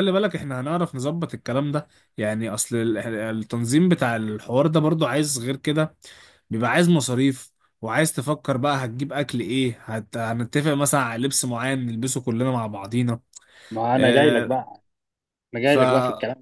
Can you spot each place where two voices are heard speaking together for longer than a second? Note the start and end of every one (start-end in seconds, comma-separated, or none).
none